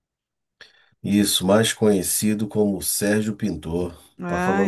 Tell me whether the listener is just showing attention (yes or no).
no